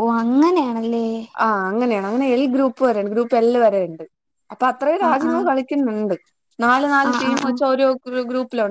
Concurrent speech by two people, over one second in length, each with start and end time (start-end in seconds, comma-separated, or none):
none